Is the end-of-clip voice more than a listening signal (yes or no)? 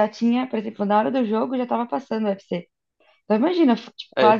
no